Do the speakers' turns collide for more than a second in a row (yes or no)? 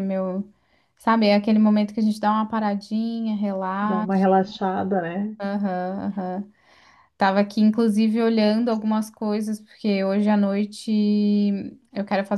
no